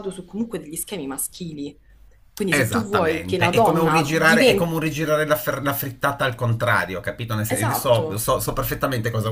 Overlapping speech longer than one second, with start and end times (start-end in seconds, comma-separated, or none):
2.5-4.8